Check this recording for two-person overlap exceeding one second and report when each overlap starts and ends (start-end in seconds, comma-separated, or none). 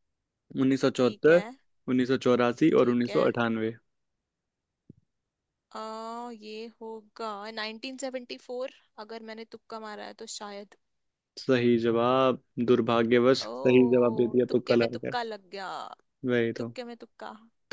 13.4-15.2